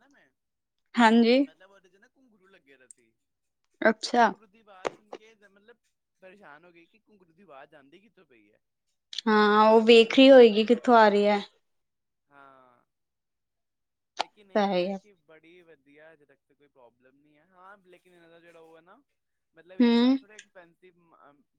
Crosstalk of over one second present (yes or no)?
yes